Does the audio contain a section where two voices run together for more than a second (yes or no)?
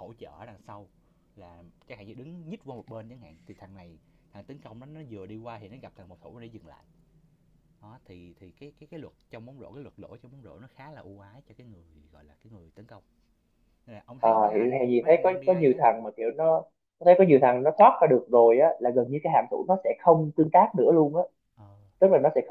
yes